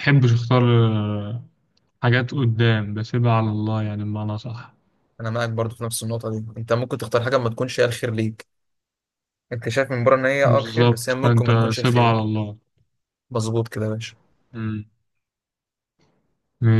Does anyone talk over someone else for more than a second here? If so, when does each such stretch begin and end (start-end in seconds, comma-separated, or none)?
10.4-12.3